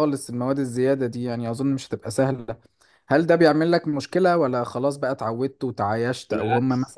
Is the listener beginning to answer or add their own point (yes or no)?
no